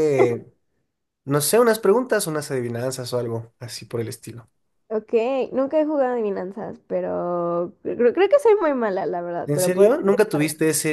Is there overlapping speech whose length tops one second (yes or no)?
no